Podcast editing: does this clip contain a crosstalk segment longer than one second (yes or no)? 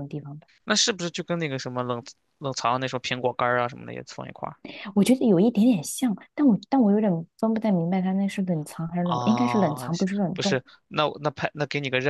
yes